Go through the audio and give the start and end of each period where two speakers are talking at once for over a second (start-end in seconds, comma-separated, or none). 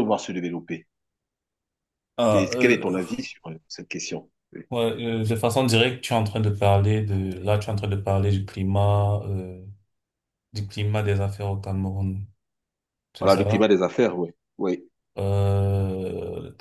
none